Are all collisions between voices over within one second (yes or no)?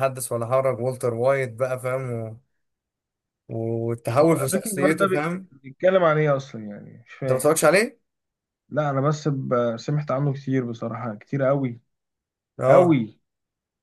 no